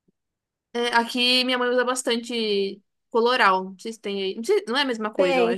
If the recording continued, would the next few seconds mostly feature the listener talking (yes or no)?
yes